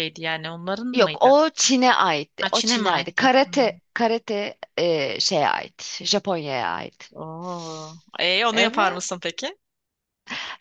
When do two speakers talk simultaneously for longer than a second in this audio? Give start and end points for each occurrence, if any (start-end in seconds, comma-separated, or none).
2.4-3.8